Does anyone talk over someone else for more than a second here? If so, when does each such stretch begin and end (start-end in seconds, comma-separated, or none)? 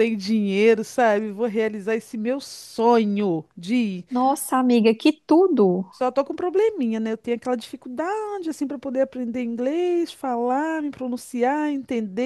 none